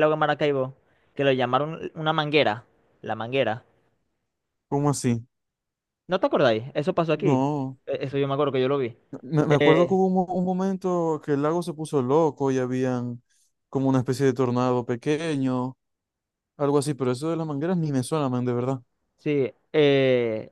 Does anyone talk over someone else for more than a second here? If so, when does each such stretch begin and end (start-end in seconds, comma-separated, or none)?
none